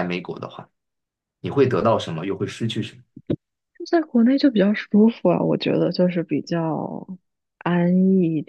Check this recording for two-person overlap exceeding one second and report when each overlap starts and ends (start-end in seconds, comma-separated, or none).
none